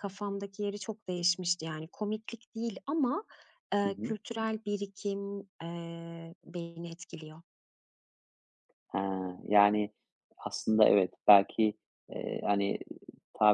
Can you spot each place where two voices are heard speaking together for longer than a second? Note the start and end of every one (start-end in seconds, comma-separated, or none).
none